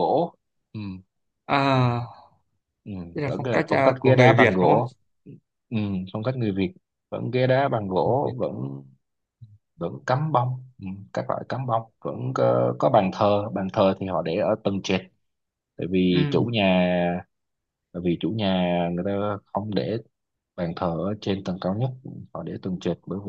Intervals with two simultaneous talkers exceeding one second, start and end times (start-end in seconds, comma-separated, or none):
3.1-4.8